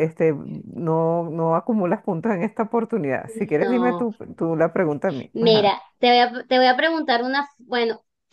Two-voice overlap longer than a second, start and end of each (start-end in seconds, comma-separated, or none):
none